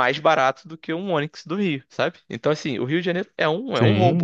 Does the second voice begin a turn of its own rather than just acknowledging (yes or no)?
yes